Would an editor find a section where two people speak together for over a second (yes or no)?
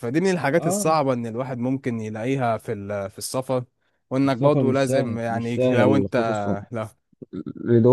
yes